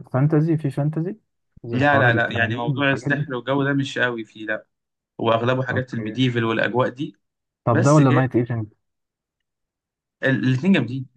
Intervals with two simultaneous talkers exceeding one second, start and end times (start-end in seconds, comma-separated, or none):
1.7-3.3